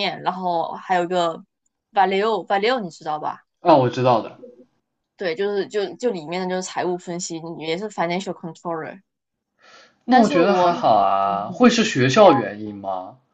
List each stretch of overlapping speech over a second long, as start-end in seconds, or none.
10.1-11.7